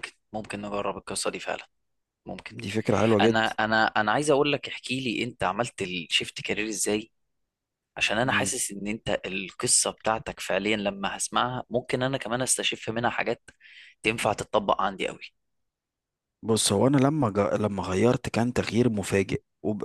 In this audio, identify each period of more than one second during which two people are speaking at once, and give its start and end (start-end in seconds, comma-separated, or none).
none